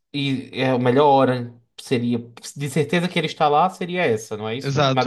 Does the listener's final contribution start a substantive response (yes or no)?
yes